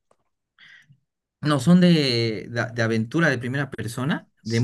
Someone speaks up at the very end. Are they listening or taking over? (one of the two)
taking over